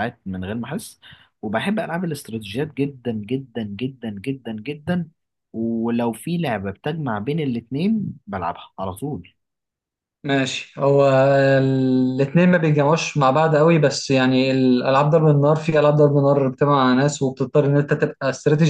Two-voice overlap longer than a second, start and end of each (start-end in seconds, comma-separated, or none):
none